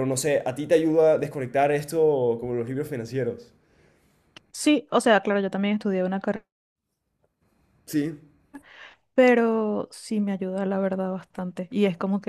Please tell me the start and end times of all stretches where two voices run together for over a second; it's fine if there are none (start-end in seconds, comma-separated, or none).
none